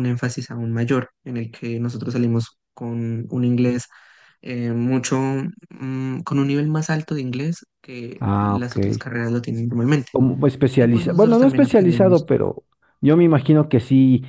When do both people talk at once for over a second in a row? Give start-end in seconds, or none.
10.8-12.3